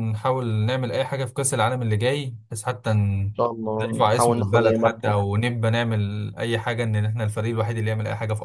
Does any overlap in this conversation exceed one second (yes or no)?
yes